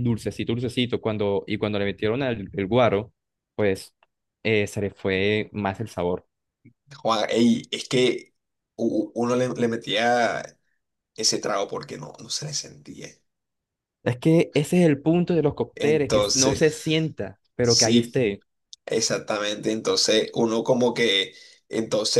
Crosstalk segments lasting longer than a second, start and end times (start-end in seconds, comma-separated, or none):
15.7-17.0